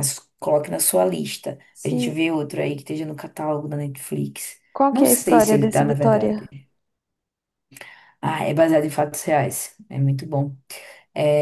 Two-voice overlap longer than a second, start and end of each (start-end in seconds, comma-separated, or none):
4.7-6.5